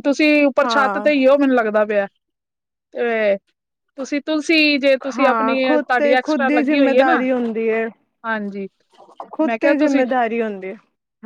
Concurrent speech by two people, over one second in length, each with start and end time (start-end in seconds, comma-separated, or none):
5.2-7.2